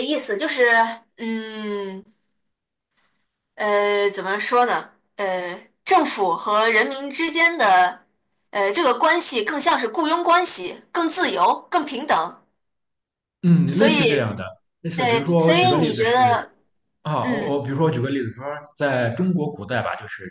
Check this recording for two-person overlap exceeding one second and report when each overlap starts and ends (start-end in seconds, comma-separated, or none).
14.9-16.4